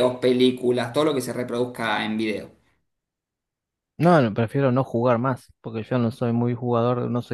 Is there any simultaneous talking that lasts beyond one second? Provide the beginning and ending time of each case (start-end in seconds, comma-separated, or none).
none